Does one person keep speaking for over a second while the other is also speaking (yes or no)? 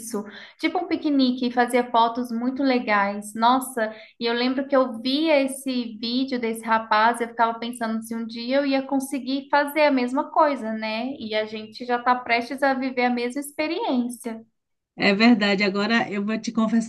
no